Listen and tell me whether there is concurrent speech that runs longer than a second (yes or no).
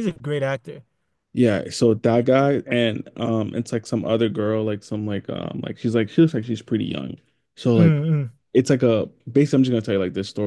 no